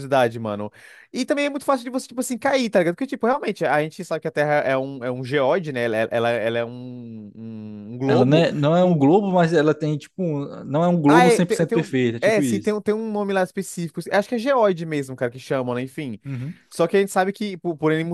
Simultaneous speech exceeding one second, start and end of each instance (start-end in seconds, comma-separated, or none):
11.1-12.7